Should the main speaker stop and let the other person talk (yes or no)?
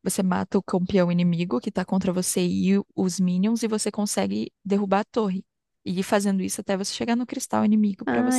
yes